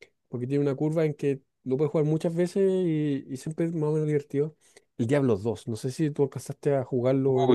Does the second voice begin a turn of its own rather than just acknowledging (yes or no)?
yes